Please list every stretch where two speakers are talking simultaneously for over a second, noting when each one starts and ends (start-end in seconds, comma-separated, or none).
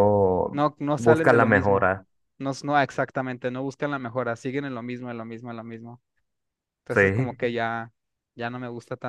0.5-1.9